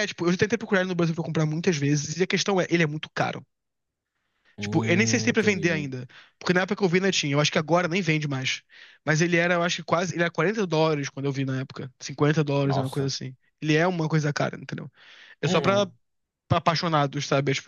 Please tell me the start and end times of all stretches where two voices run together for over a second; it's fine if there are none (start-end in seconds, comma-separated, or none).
4.6-5.9